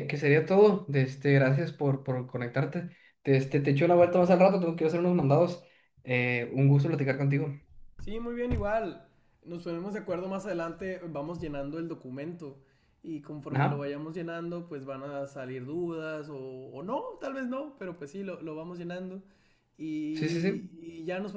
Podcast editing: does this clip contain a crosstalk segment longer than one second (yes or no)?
no